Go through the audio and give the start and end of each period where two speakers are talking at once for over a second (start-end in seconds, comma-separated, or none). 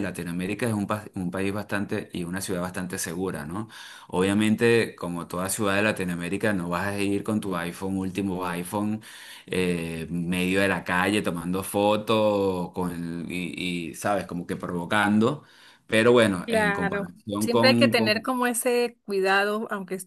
16.4-18.3